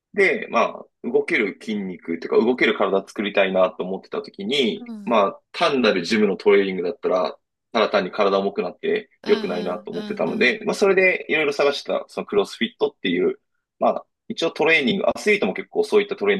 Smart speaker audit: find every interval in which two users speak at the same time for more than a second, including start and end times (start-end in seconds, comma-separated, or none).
9.2-10.6